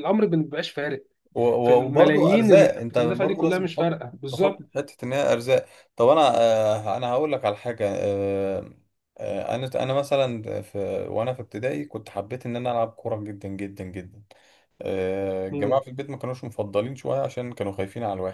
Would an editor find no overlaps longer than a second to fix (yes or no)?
no